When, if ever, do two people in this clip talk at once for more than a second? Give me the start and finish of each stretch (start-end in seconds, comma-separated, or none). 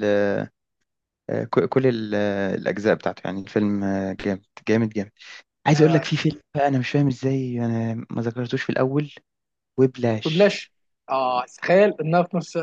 none